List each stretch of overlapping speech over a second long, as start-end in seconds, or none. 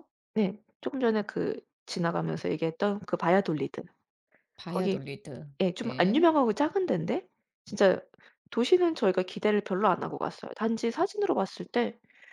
none